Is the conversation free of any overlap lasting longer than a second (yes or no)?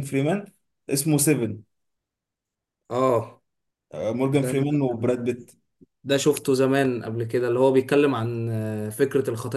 yes